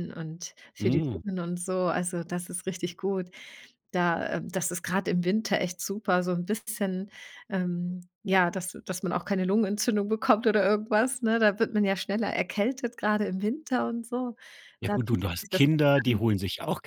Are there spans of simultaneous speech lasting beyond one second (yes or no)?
yes